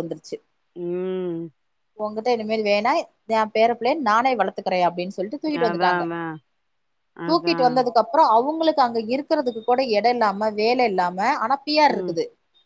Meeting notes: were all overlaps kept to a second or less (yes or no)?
yes